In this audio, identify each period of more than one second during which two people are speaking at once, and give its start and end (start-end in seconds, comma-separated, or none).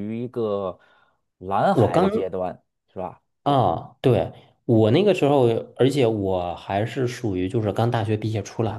none